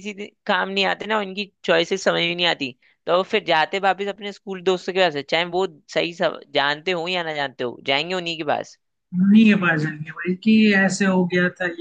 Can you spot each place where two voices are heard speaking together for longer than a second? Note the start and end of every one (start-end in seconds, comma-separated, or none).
none